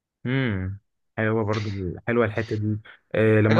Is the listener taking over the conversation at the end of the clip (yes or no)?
no